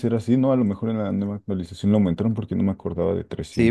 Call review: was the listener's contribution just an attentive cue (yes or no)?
no